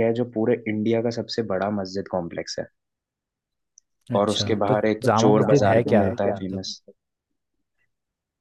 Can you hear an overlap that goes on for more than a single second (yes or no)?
yes